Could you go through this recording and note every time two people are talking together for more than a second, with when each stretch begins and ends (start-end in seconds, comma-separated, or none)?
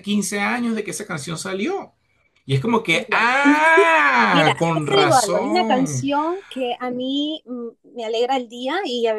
4.3-6.1